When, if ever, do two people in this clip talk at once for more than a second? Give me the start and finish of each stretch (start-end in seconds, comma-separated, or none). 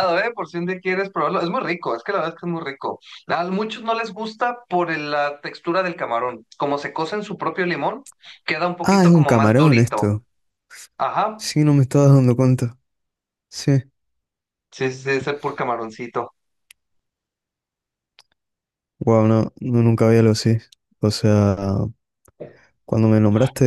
8.8-10.1